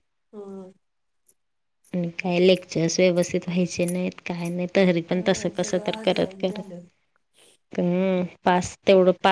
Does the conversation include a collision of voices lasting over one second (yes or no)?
yes